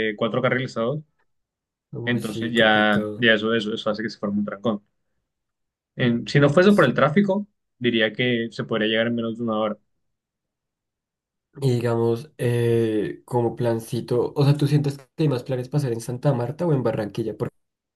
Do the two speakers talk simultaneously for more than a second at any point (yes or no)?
yes